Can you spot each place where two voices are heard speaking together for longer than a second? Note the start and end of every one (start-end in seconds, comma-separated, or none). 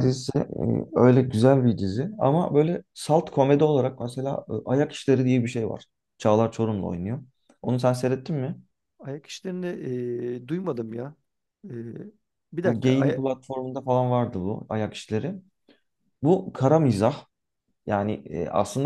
none